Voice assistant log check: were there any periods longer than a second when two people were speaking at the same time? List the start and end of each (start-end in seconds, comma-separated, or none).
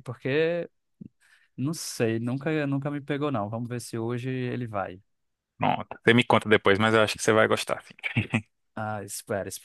none